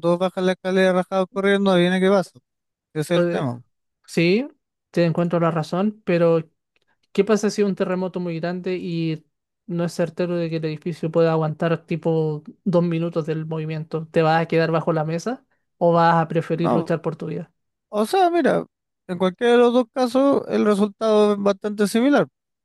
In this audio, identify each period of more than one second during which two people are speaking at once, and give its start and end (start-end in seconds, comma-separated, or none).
none